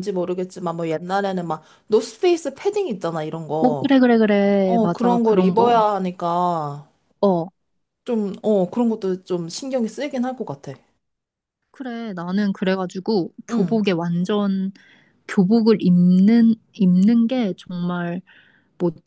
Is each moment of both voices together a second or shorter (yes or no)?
no